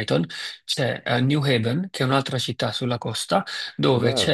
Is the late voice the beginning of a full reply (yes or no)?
no